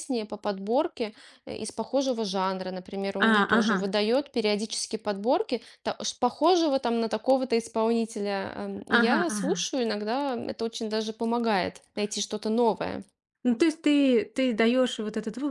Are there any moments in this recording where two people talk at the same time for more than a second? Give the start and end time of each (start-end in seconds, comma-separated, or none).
none